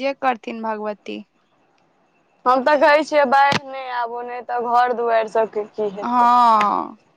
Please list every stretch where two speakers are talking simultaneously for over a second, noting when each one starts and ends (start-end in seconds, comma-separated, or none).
none